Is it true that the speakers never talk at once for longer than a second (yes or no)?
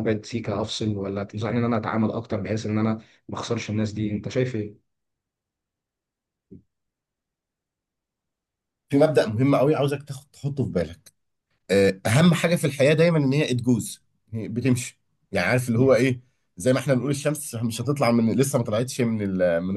yes